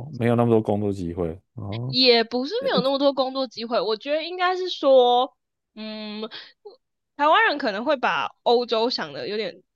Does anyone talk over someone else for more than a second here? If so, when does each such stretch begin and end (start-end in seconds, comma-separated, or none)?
none